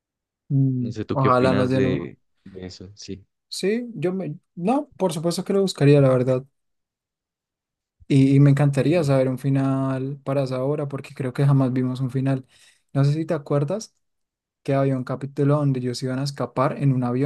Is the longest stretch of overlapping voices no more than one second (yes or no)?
no